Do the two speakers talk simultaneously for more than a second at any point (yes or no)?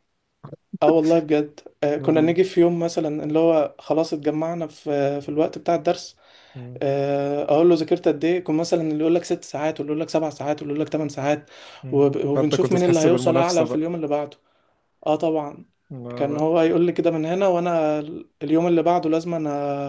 yes